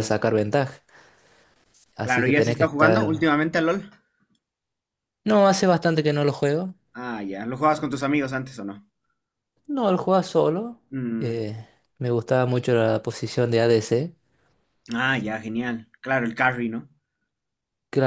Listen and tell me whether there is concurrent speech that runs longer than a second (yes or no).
yes